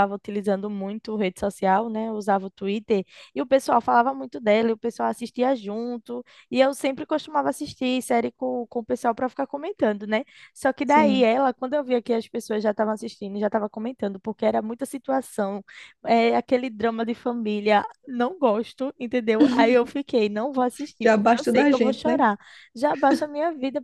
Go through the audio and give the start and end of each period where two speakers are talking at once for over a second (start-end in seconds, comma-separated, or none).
21.0-22.2